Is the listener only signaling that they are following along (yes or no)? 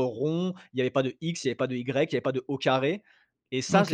no